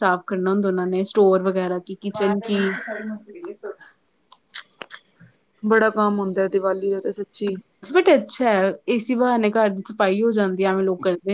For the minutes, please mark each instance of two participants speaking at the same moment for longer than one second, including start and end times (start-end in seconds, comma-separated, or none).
none